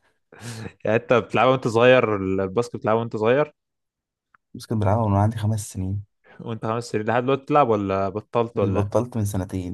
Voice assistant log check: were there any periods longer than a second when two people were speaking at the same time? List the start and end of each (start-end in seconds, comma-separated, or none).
none